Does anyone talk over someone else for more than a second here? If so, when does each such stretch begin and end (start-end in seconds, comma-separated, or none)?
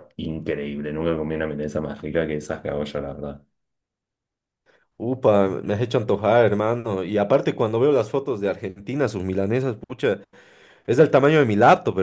none